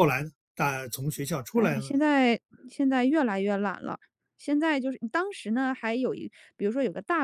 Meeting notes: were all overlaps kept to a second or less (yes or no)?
yes